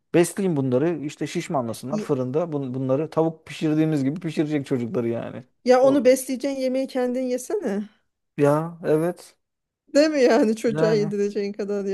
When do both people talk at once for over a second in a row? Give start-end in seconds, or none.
none